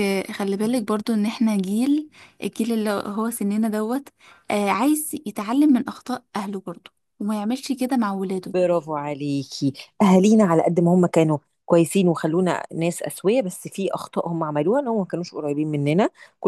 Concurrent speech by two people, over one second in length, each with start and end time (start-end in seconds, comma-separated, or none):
none